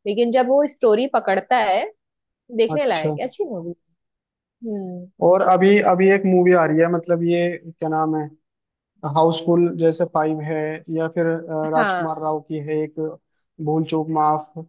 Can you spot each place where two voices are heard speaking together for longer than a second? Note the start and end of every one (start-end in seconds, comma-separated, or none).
none